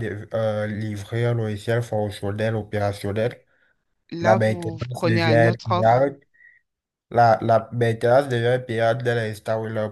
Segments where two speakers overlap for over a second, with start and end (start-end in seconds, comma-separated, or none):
4.2-6.1